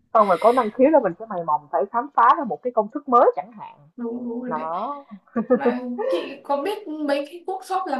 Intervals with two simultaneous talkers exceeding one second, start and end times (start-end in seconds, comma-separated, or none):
none